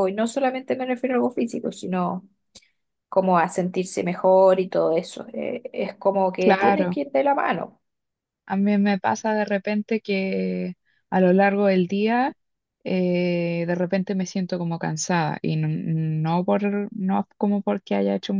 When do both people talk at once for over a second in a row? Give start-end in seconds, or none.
none